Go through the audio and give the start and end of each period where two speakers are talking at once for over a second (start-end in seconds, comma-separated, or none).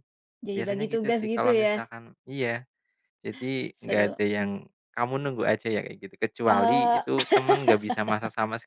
0.5-1.8